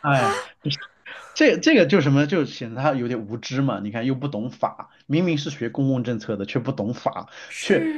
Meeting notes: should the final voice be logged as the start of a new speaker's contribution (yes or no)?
no